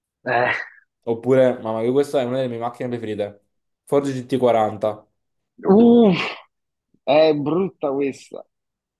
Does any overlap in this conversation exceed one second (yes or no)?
no